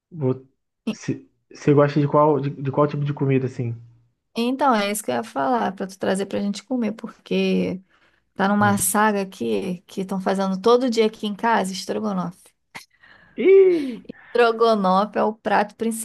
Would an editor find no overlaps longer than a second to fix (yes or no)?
yes